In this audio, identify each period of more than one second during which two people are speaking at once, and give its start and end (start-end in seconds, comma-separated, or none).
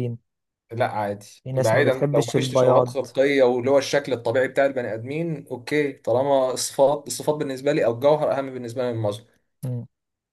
1.4-2.9